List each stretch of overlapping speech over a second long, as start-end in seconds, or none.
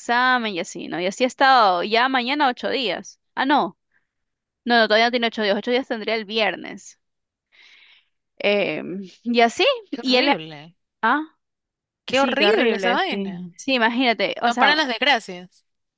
12.1-13.5